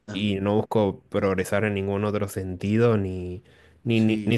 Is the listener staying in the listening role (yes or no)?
yes